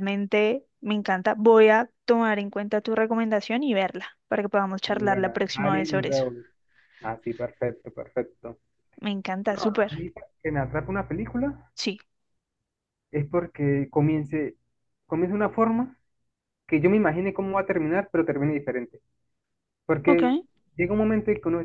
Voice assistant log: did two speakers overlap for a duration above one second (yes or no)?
yes